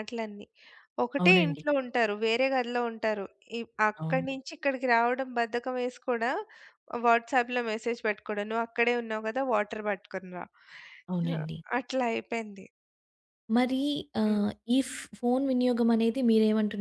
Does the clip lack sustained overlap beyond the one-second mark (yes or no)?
yes